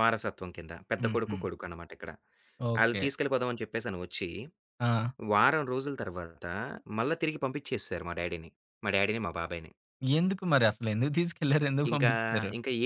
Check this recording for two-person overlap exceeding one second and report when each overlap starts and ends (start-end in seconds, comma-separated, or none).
none